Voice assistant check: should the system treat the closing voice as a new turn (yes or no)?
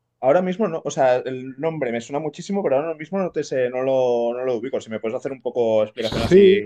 yes